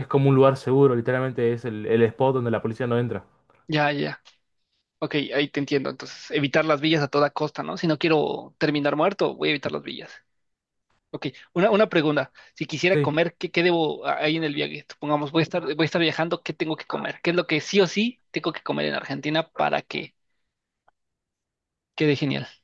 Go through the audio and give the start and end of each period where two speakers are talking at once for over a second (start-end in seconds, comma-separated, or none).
none